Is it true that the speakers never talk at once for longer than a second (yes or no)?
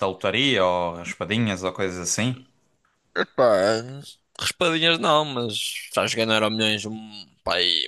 yes